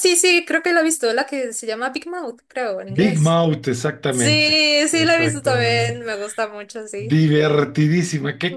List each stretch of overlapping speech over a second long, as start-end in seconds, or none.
4.1-6.0